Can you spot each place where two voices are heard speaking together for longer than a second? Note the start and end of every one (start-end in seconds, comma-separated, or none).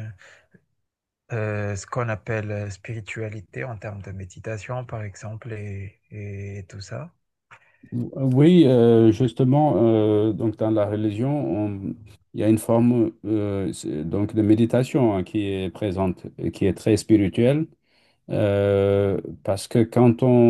none